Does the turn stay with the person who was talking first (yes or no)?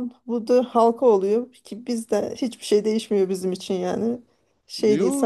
no